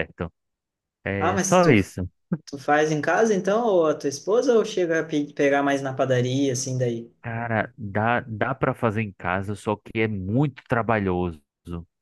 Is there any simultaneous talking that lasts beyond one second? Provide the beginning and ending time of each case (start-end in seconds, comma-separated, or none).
none